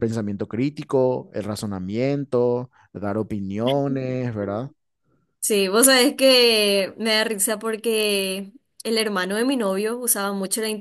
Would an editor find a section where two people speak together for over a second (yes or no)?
no